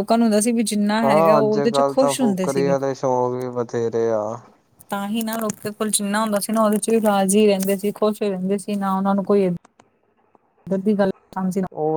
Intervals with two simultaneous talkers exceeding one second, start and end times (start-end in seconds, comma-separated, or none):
1.0-2.7